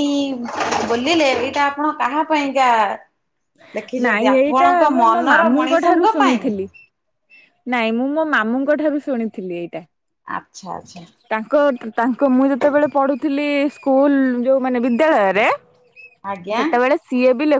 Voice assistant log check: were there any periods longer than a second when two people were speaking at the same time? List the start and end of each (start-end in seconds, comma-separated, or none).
4.0-6.5